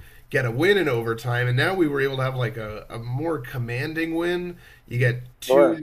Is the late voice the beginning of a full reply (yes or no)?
no